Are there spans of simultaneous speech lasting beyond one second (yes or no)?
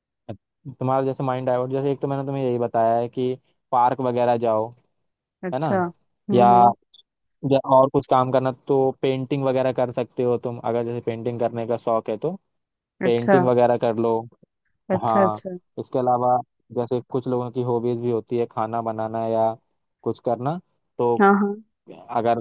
no